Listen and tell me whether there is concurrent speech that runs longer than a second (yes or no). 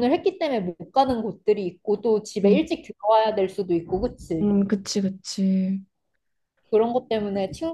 no